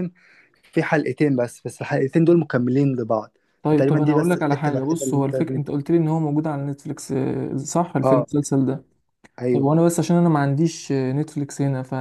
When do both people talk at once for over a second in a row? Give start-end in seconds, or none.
3.6-5.7